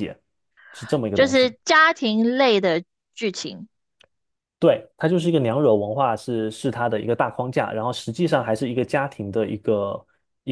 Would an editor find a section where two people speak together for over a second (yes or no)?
no